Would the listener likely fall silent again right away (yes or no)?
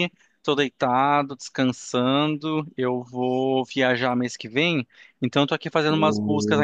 yes